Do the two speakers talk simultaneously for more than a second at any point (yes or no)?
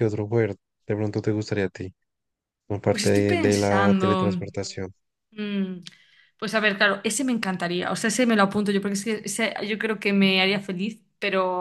yes